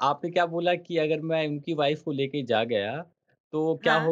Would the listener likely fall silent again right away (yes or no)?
yes